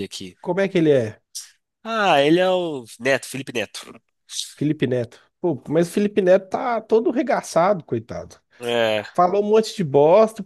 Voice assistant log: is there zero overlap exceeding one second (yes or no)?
yes